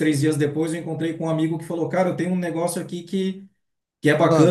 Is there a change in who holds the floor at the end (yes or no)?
no